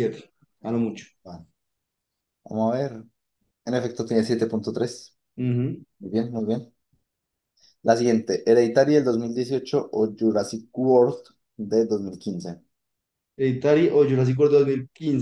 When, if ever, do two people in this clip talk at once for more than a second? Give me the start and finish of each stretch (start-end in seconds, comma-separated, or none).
none